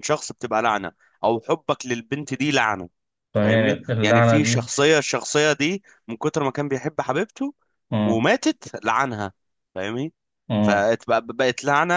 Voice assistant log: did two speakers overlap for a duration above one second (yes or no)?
yes